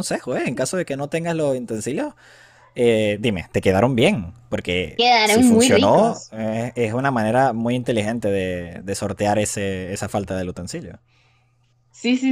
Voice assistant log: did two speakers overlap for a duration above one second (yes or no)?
yes